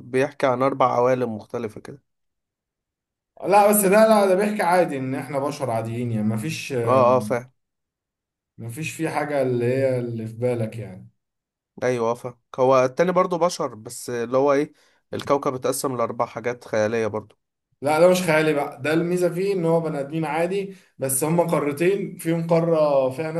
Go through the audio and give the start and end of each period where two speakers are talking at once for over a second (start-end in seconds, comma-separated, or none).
none